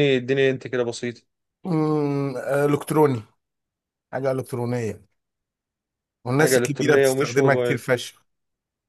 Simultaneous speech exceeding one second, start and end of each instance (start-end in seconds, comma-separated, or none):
6.4-7.8